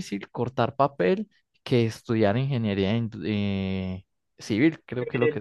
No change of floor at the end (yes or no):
yes